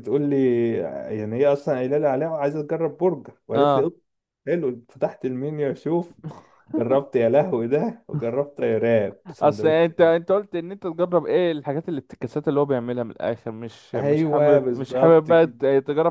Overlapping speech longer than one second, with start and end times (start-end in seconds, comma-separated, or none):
13.9-15.5